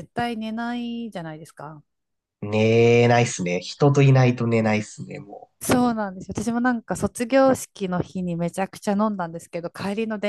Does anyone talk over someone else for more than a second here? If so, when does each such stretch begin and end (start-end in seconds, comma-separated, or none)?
none